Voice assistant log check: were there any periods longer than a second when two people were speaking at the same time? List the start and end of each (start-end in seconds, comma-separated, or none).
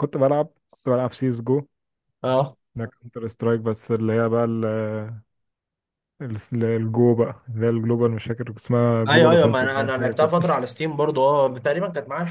9.1-10.3